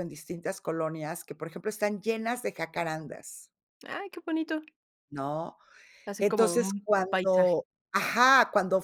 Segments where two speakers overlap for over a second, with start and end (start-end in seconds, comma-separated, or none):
6.2-7.5